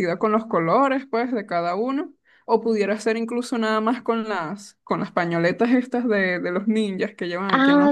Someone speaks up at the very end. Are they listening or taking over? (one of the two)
taking over